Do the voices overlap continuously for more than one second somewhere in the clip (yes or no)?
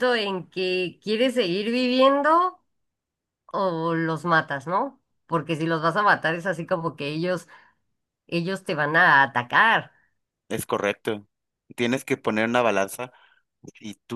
no